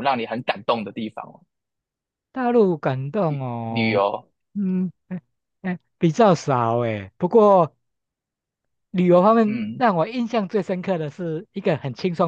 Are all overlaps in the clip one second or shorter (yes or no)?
yes